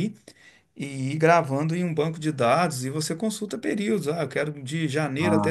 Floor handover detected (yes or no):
no